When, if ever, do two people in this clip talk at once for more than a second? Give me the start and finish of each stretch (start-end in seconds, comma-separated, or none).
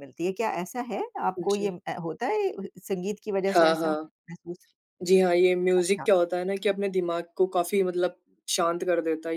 none